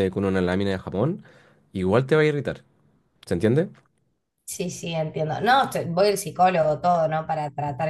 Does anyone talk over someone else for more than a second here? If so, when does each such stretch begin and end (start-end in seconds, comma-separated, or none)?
none